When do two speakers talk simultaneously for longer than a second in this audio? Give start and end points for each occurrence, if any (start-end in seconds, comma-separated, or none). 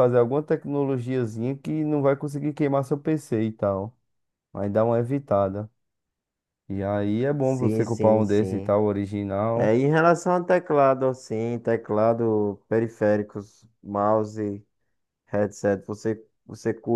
7.4-8.8